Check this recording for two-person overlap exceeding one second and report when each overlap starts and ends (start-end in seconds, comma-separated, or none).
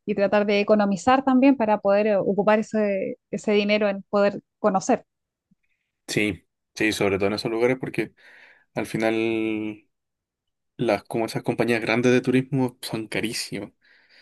none